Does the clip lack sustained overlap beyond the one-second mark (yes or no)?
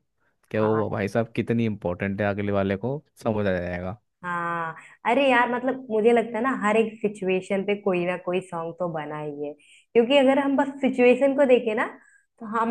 yes